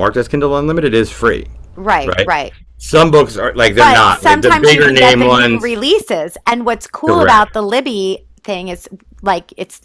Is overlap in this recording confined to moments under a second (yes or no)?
no